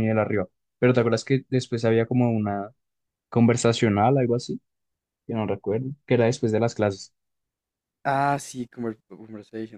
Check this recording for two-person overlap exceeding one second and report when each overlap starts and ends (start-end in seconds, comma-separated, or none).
none